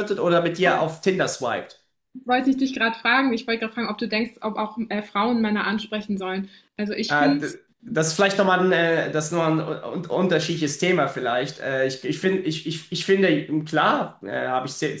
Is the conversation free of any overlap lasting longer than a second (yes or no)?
yes